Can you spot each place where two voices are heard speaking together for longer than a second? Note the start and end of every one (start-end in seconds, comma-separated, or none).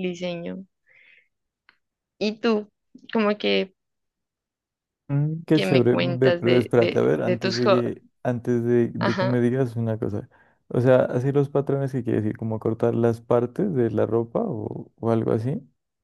5.5-7.8